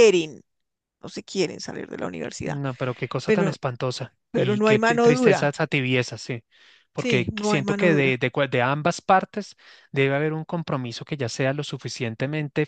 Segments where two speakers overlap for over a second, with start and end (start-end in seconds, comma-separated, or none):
4.3-5.5, 7.0-8.2